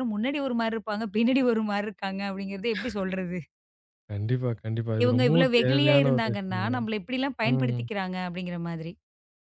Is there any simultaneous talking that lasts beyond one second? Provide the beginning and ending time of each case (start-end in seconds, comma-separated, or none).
5.0-6.8